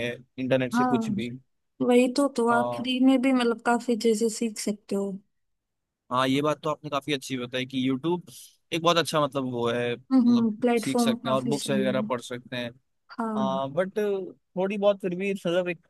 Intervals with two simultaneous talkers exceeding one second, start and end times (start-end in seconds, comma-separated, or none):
10.1-12.1